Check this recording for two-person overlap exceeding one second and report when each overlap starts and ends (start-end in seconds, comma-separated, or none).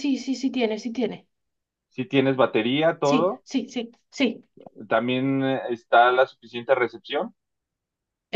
none